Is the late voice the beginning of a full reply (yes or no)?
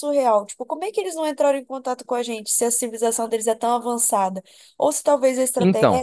no